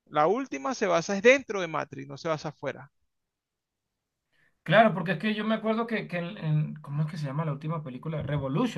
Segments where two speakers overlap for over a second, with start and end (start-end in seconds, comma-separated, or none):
none